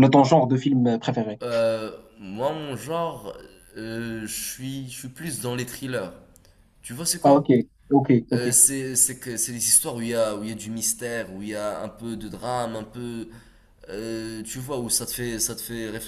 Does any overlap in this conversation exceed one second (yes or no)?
no